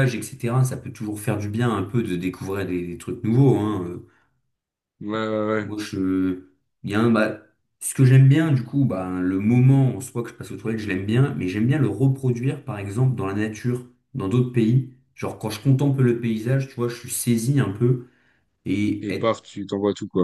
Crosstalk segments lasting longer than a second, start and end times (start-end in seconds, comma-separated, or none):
none